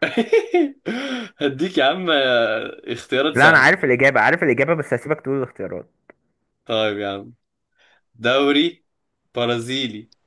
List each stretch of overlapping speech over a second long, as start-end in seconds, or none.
none